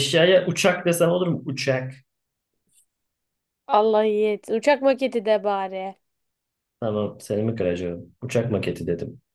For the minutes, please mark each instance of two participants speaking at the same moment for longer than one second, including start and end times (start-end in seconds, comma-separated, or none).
none